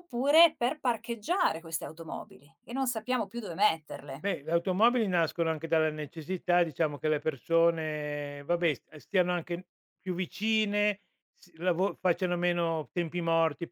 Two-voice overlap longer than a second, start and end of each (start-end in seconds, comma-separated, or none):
none